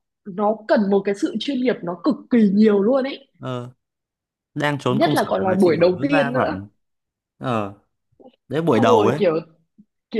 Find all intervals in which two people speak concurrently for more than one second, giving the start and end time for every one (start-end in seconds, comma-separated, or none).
4.9-6.6